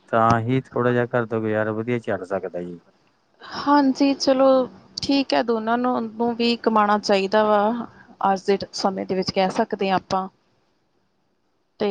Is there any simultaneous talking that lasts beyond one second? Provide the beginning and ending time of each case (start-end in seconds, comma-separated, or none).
none